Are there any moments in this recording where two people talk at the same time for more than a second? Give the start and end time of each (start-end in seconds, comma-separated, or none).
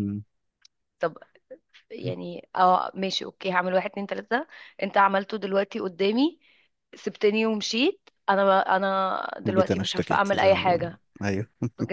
9.4-11.0